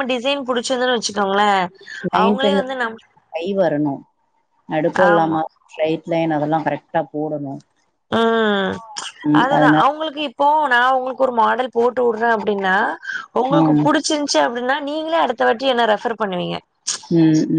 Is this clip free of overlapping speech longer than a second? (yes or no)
yes